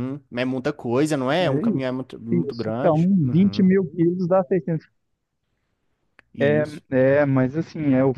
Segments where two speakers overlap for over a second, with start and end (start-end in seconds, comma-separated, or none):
1.4-3.6